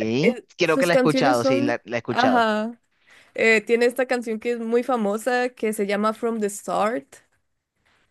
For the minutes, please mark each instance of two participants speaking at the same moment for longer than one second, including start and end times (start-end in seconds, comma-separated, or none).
0.6-2.5